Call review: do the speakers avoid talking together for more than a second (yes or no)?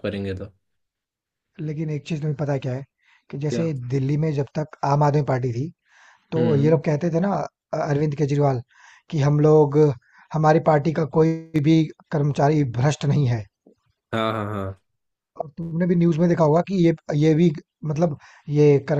yes